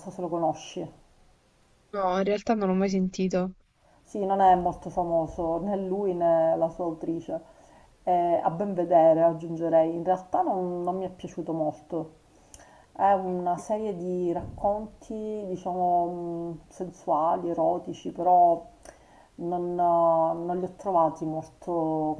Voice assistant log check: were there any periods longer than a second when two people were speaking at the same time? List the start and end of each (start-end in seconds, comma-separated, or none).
none